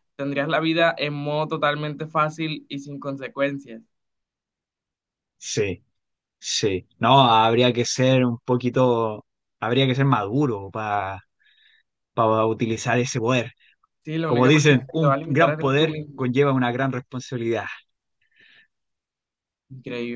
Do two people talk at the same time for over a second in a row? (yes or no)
yes